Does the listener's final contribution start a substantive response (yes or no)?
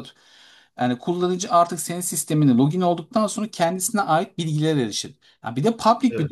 no